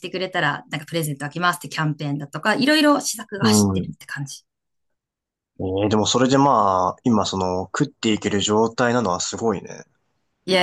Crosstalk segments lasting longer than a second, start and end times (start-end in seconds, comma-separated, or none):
none